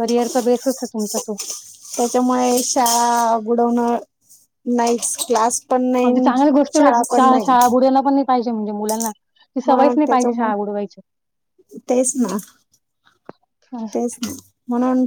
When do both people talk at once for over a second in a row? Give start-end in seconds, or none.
9.7-11.0